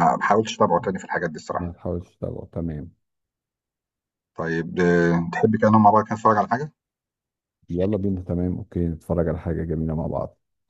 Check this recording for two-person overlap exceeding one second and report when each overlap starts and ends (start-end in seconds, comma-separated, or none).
none